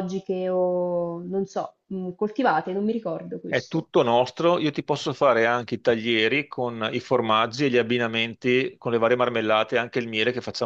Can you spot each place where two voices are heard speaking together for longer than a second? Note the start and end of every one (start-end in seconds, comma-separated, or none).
none